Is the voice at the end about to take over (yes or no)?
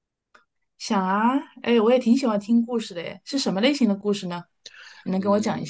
yes